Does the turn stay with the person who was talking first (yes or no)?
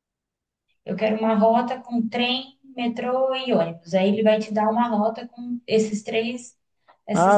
no